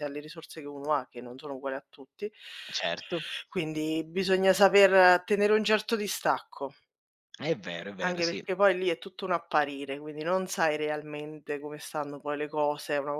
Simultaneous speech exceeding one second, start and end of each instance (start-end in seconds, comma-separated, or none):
none